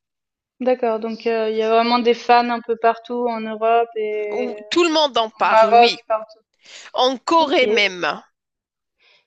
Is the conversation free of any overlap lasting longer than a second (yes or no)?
yes